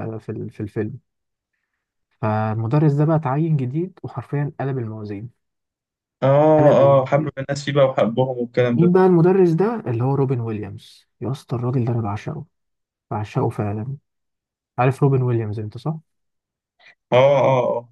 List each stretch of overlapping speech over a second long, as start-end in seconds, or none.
none